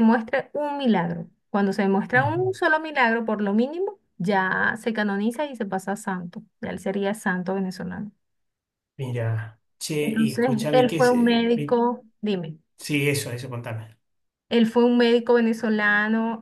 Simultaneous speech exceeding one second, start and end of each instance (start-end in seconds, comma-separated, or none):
10.0-11.8